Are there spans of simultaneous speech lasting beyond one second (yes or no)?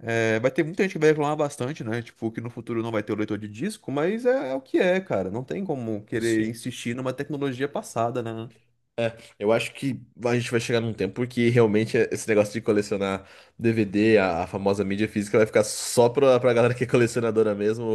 no